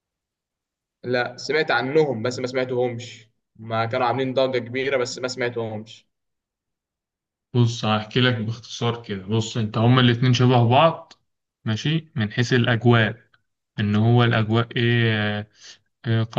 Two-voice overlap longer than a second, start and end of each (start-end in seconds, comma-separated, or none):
none